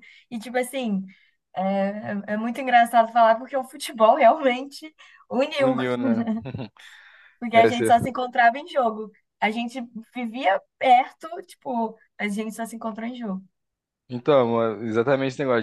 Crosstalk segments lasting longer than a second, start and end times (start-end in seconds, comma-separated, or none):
none